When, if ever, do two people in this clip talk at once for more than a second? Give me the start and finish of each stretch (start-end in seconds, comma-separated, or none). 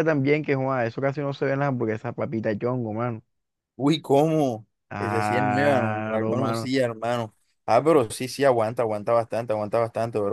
4.9-6.7